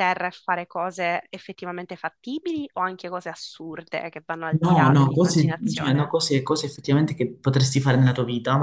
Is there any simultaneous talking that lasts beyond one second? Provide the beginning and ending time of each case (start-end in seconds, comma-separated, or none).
4.6-6.2